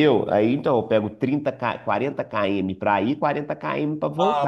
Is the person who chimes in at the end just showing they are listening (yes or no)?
no